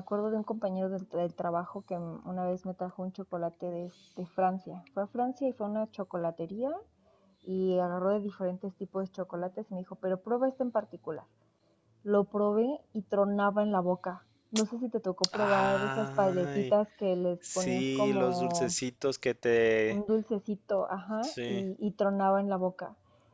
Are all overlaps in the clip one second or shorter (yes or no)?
no